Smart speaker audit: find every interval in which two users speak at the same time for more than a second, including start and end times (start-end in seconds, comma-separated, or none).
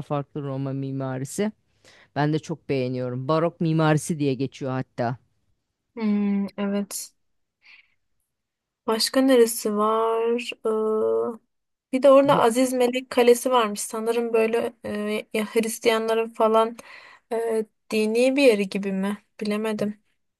none